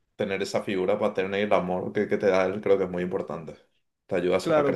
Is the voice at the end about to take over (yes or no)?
yes